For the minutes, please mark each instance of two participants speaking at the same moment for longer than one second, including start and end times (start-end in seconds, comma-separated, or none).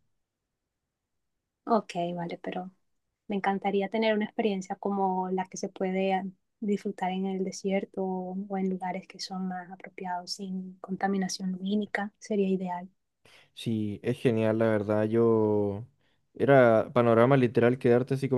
none